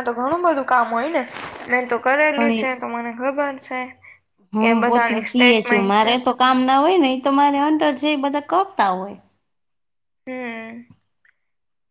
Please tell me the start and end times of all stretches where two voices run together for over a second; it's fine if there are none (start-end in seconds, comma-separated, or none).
4.6-6.1